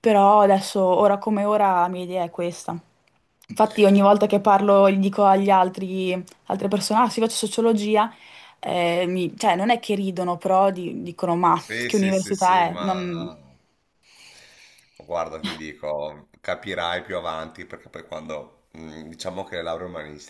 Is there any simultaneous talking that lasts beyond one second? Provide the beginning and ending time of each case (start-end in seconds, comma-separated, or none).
11.5-13.3